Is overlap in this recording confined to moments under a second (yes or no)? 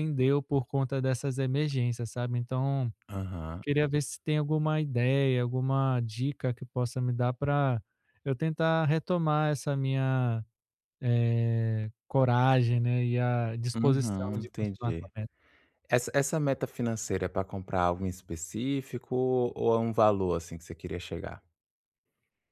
no